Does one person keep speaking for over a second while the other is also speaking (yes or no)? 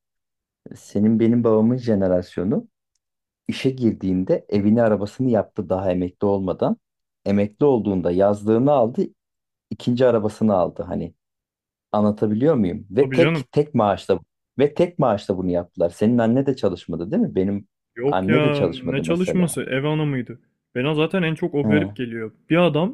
yes